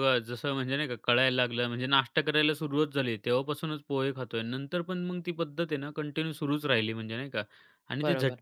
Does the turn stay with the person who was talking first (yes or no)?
yes